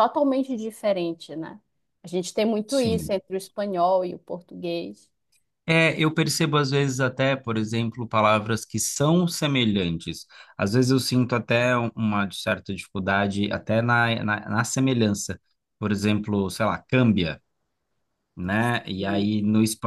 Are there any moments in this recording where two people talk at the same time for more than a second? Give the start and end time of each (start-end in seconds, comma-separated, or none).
none